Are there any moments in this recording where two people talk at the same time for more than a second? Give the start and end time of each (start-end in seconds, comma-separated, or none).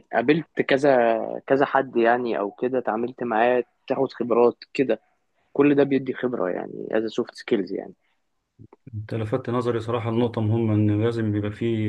none